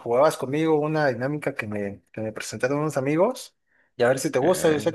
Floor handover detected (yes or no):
no